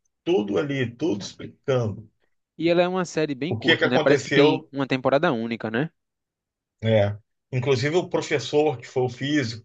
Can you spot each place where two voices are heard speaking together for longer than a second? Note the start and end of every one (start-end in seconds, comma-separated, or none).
3.5-4.7